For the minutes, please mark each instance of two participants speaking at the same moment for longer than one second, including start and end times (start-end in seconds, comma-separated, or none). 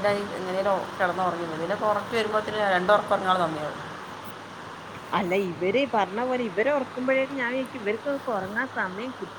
none